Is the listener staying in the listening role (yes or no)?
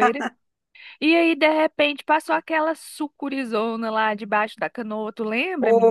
no